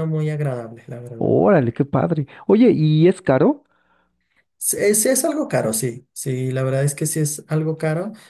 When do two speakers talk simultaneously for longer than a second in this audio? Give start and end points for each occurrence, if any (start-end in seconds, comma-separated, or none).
none